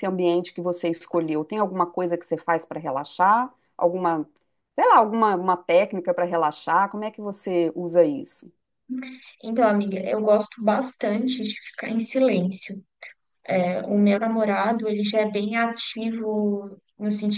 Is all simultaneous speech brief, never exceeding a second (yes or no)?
yes